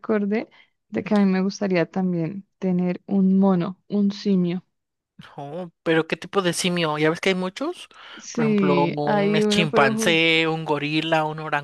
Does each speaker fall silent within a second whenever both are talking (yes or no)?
no